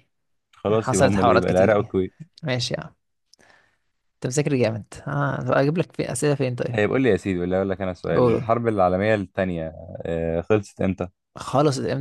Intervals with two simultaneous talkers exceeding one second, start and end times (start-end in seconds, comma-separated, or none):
0.7-2.0